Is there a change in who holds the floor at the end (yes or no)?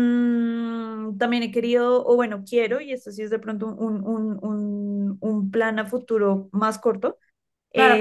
yes